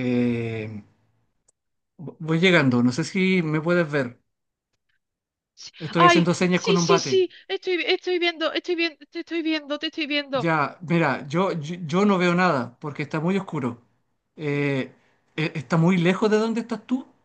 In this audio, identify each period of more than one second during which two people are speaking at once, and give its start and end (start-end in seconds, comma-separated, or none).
5.8-7.3